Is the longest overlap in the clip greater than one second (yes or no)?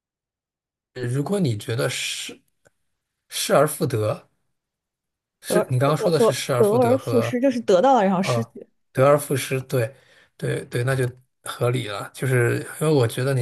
yes